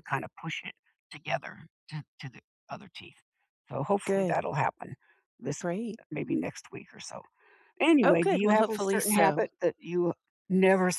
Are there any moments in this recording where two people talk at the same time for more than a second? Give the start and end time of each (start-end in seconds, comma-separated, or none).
8.0-9.4